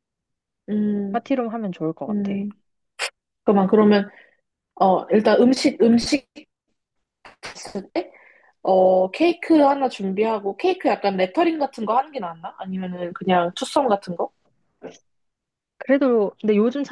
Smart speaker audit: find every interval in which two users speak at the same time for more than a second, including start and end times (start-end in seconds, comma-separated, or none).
none